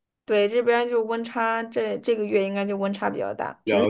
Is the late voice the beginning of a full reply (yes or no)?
yes